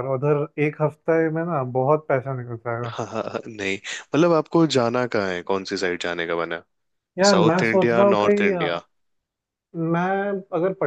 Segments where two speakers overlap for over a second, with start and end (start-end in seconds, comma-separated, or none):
7.3-8.8